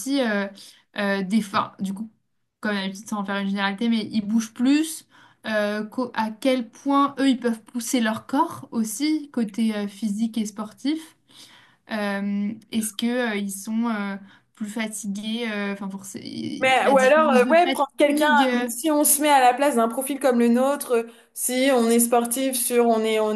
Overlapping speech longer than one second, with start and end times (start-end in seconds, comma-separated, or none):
16.6-18.7